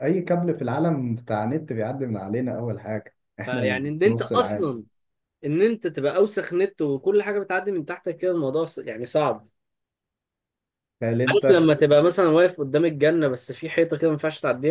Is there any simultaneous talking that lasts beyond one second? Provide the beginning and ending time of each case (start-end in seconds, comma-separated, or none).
3.5-4.8